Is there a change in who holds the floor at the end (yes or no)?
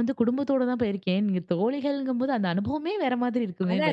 yes